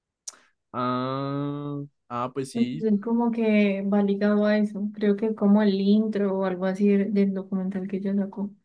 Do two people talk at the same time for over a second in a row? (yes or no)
no